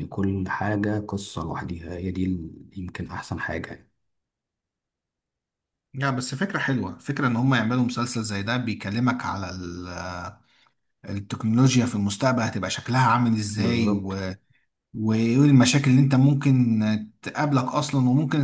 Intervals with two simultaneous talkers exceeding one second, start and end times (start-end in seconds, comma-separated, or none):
none